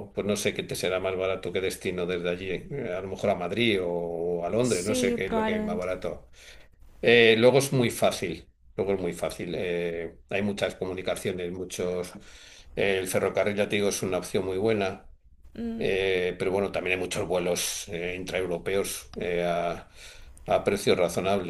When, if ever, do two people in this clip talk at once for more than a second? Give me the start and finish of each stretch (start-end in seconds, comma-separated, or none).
4.6-5.9